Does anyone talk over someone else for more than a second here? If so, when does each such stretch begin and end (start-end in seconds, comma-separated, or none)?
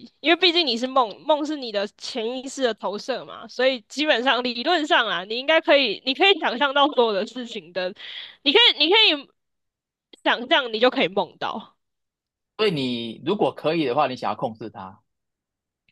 none